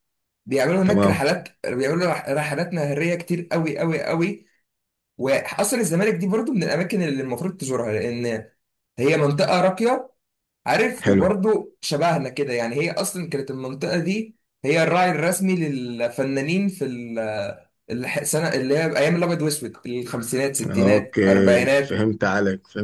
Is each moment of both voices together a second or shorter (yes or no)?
no